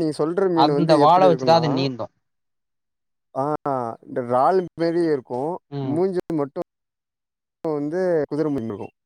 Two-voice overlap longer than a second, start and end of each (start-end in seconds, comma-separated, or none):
none